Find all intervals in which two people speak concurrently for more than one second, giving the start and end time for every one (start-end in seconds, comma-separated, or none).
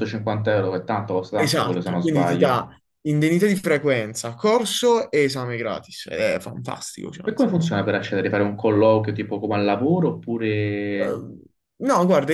1.3-2.6